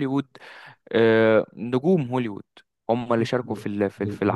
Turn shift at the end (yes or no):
no